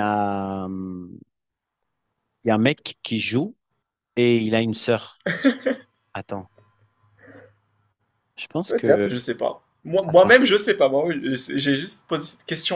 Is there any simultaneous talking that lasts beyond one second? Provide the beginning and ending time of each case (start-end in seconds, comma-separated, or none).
none